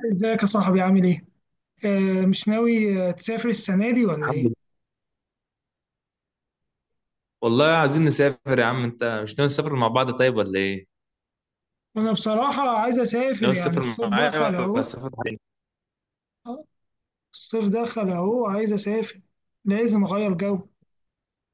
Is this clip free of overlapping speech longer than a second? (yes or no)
no